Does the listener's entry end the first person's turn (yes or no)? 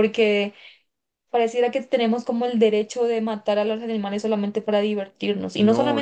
yes